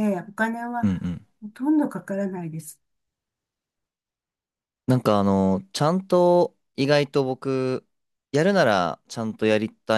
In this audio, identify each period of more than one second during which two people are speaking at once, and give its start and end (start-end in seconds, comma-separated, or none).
none